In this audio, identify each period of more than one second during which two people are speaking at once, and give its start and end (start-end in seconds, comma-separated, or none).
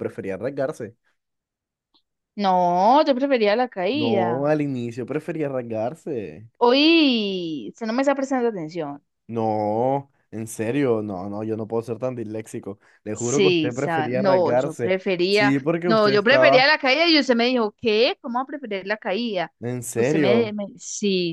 13.2-16.7